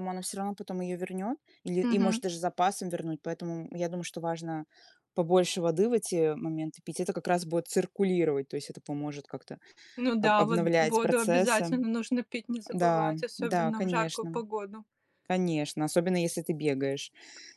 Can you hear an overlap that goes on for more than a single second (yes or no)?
yes